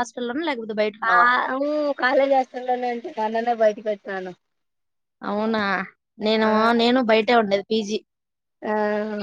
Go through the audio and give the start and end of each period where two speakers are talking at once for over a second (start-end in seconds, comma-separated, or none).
none